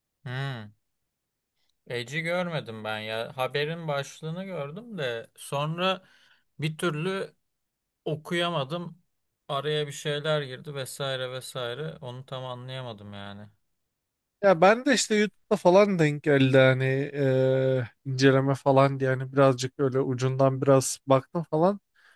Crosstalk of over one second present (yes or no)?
no